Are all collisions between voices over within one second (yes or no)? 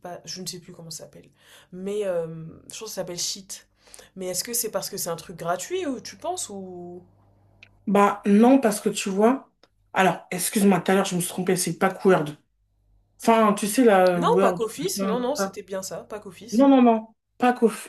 no